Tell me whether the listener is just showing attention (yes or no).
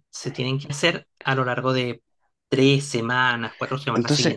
no